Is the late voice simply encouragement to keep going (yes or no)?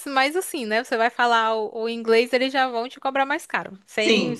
no